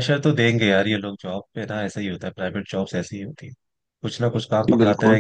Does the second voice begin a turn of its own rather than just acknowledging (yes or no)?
no